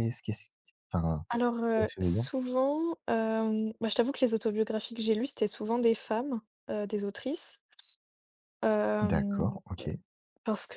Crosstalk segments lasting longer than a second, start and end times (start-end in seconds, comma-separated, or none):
none